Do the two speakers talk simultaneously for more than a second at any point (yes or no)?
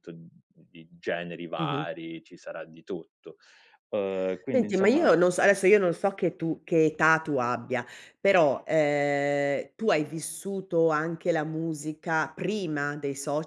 no